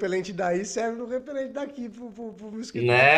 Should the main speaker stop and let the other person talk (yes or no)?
yes